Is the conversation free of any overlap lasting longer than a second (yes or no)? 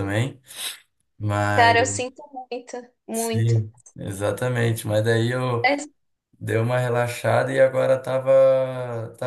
yes